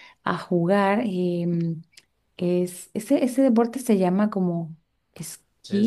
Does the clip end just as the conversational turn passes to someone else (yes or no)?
yes